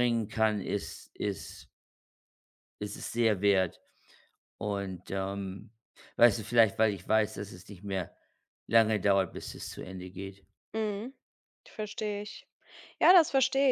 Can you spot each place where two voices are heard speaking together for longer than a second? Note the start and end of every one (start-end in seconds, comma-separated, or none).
none